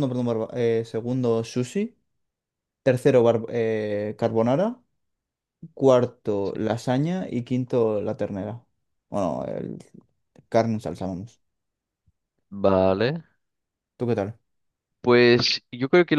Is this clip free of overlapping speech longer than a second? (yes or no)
yes